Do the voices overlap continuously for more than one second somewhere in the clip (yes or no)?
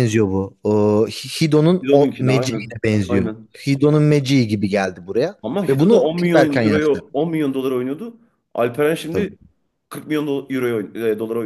yes